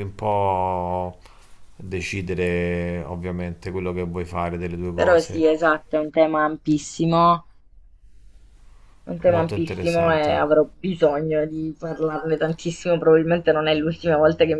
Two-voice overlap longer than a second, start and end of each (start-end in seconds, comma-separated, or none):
9.3-10.6